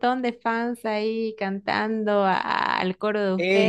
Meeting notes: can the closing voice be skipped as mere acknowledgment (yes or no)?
no